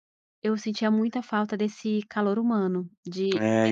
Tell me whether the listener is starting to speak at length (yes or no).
yes